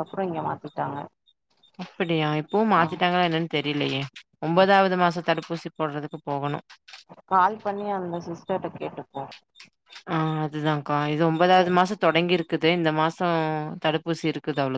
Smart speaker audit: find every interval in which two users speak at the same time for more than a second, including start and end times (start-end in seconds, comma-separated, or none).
none